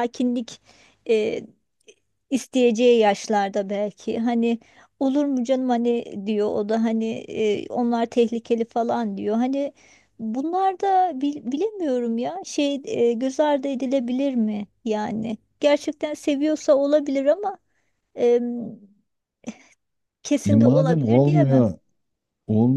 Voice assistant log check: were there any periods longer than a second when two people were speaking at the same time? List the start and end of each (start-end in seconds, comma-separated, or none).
20.4-21.7